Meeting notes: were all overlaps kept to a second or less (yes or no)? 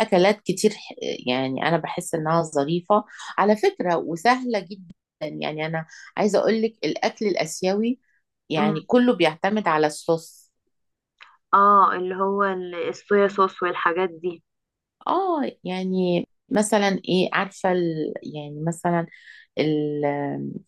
yes